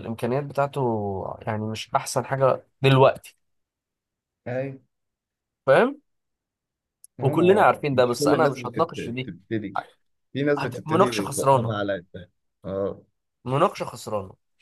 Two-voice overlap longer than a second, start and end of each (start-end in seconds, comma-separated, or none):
7.2-9.3, 10.6-11.8